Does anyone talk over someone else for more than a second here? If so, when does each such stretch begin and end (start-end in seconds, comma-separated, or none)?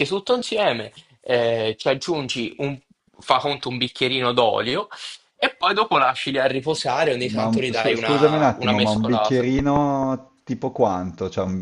7.3-9.4